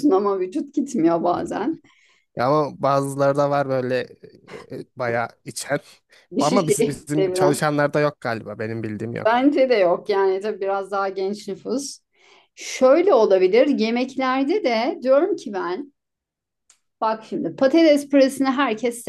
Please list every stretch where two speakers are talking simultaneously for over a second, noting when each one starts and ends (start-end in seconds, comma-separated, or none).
6.4-7.6